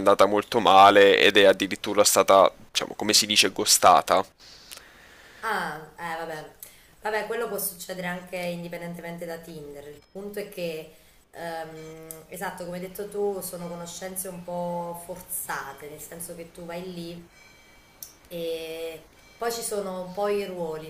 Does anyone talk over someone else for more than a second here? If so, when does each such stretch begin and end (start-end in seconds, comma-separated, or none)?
none